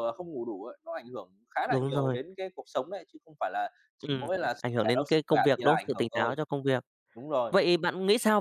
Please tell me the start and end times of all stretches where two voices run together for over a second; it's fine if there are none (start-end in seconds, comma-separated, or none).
4.0-6.3